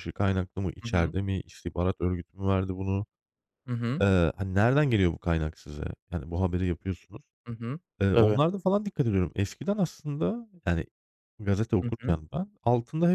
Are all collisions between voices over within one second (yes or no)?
yes